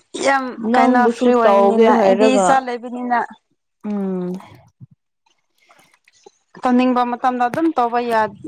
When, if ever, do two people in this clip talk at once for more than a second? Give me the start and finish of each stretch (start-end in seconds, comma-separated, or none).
0.7-2.5